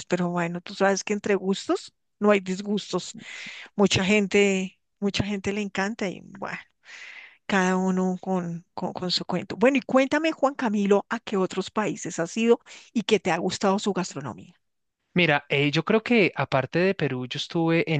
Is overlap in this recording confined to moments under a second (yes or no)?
yes